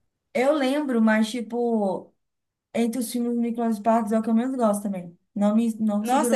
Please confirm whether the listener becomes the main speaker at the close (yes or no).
yes